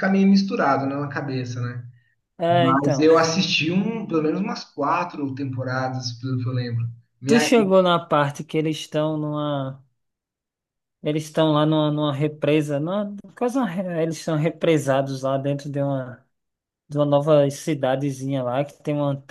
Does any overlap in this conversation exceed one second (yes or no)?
no